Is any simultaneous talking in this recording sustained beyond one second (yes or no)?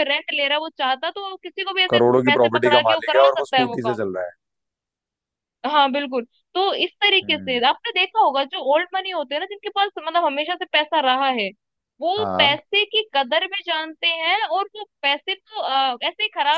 yes